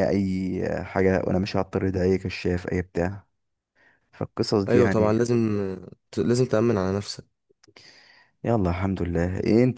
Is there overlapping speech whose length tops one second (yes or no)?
no